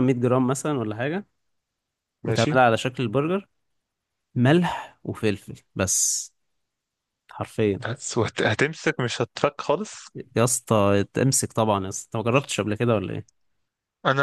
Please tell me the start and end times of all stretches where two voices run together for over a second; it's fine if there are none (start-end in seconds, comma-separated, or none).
none